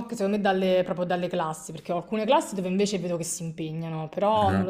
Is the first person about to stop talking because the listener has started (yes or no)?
no